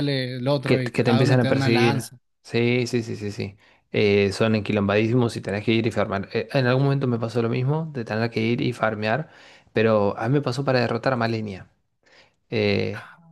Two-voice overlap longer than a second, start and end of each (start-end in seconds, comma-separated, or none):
0.6-2.1